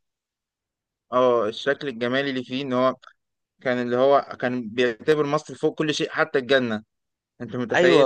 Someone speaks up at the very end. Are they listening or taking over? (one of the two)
taking over